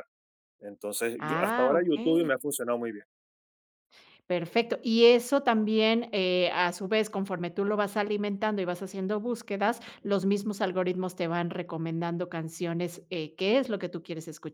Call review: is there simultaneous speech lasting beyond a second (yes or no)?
yes